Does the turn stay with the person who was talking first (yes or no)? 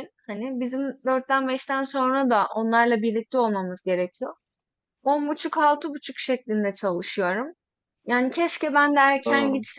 yes